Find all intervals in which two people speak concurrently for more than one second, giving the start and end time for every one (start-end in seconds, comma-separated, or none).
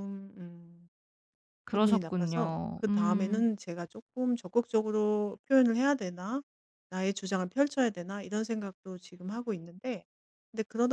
1.7-3.4